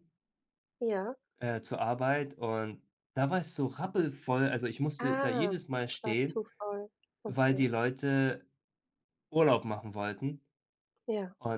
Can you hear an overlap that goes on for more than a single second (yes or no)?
yes